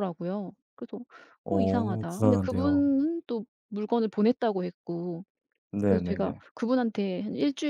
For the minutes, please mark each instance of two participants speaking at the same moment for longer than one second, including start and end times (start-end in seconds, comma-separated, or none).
1.5-2.8